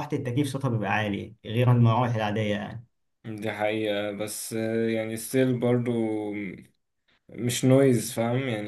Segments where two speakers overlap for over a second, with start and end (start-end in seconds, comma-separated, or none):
none